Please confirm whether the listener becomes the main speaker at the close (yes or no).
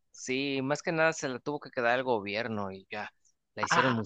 yes